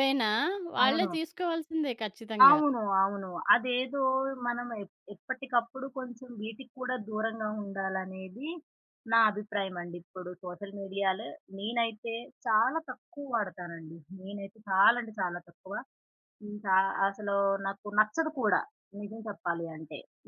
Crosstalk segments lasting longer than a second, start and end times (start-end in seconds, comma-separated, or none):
none